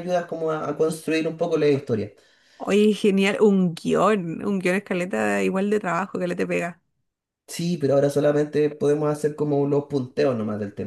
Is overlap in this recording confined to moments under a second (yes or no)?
yes